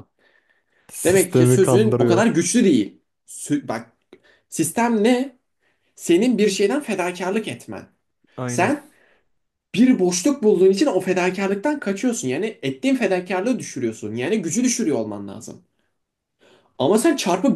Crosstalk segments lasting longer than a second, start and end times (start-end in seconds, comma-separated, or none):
1.0-2.3